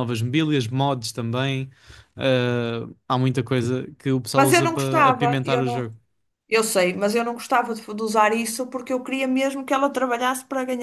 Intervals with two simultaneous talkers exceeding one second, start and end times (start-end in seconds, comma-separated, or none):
4.3-5.9